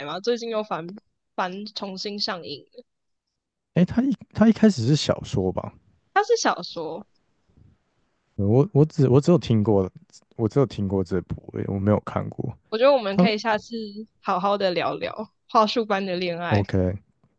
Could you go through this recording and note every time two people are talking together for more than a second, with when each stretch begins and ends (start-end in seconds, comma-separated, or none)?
none